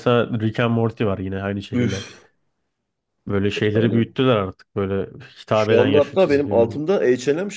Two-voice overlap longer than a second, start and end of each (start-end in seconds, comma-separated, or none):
5.5-6.8